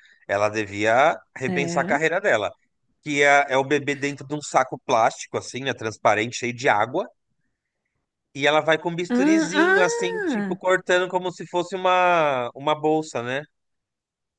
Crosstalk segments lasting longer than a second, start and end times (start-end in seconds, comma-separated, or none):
9.1-10.6